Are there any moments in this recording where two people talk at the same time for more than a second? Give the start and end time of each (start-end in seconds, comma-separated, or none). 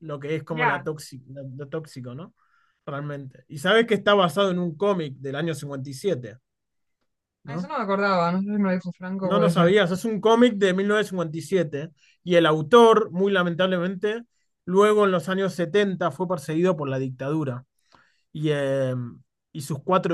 none